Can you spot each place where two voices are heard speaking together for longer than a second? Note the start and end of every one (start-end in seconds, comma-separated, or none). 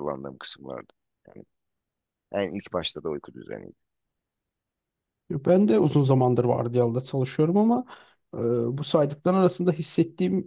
none